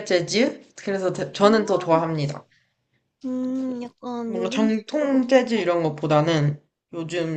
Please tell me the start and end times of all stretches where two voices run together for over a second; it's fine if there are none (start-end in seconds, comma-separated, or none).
4.2-5.7